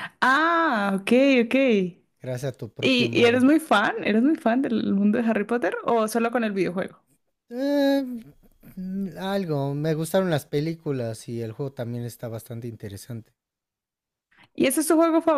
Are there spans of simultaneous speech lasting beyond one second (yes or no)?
no